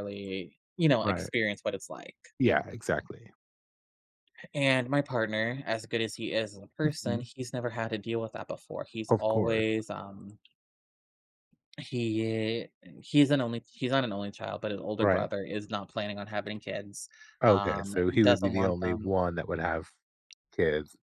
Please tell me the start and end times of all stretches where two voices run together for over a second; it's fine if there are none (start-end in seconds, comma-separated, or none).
17.5-19.1